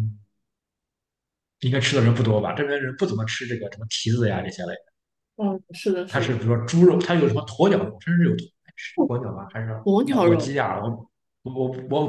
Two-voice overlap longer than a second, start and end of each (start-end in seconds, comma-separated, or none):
none